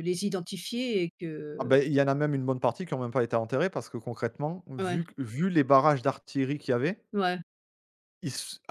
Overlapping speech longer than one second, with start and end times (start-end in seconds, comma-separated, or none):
none